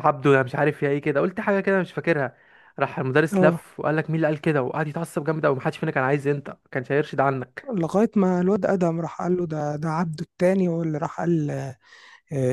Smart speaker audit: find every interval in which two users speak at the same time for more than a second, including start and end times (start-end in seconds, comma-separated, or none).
none